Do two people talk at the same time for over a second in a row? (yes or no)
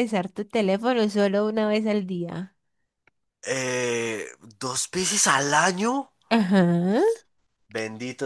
no